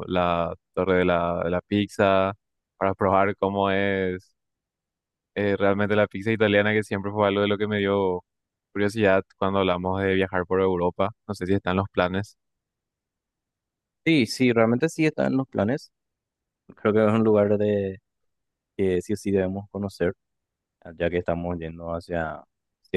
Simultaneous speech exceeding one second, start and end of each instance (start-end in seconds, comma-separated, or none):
none